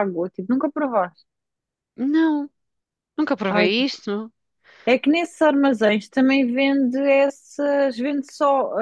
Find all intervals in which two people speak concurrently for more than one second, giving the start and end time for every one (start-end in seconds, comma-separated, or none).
none